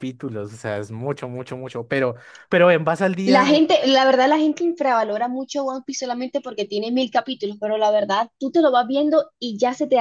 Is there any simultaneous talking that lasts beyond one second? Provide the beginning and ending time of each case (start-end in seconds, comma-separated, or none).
none